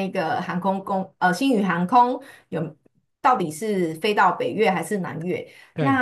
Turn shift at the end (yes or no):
no